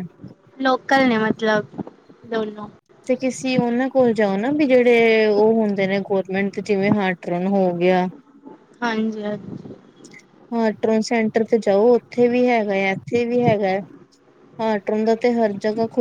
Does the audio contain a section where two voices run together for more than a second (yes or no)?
no